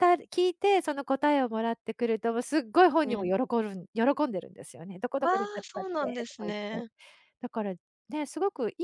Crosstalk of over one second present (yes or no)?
yes